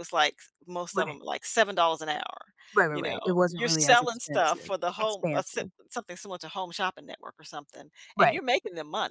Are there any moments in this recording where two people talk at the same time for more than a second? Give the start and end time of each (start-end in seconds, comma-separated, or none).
2.9-5.7